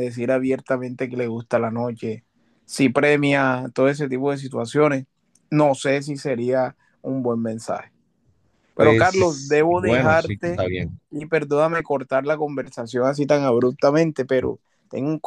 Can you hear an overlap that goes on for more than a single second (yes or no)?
yes